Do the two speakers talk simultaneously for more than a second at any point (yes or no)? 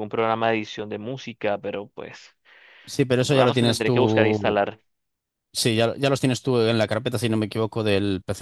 yes